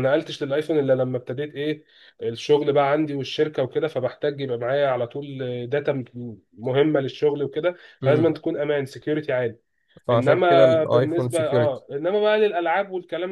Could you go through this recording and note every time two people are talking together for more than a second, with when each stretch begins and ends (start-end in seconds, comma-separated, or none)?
10.1-11.8